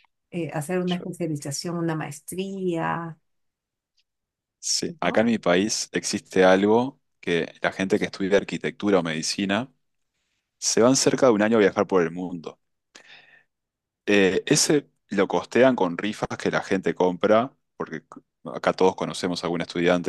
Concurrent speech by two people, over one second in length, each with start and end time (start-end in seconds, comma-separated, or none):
none